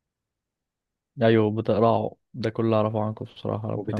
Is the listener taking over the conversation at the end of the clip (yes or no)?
no